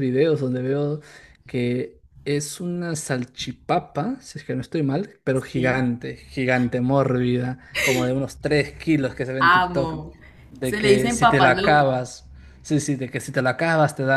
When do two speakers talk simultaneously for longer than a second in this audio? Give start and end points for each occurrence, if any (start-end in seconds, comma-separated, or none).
10.6-11.9